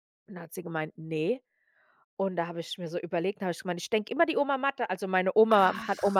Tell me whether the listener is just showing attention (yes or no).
yes